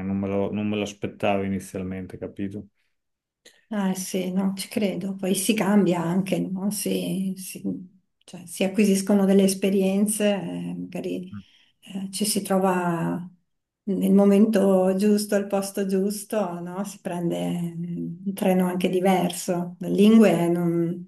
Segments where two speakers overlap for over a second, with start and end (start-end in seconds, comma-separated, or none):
none